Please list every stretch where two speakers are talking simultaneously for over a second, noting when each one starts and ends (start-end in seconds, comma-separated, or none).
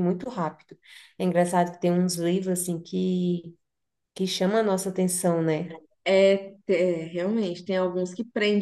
none